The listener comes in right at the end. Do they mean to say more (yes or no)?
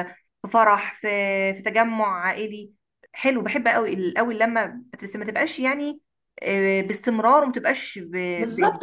yes